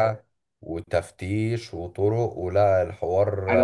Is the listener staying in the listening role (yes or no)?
no